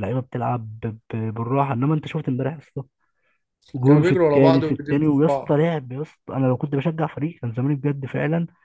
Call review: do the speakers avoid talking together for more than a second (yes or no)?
no